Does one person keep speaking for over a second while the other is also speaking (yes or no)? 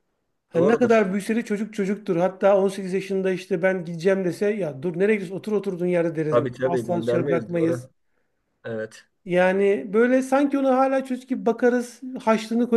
yes